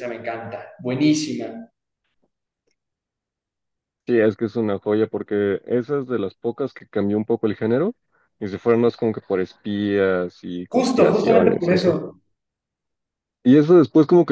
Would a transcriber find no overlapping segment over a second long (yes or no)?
no